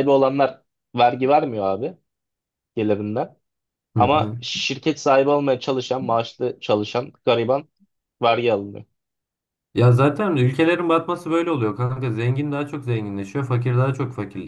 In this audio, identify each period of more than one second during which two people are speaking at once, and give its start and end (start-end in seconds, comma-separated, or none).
none